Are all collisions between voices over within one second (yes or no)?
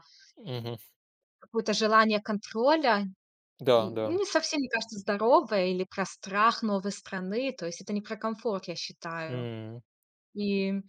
yes